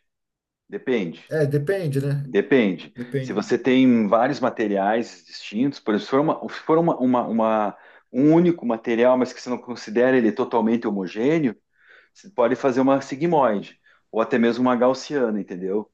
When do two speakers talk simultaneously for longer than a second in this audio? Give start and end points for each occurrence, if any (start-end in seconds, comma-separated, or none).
none